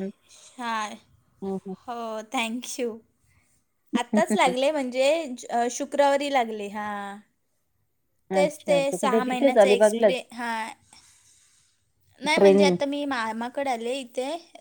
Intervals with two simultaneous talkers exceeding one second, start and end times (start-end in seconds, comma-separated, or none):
8.4-10.2